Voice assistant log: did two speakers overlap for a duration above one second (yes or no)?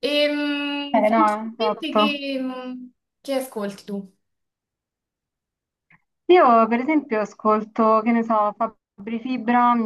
yes